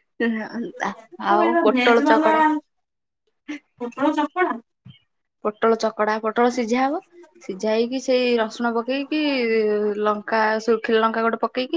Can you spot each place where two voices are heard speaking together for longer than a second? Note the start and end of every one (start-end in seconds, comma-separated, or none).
0.6-2.3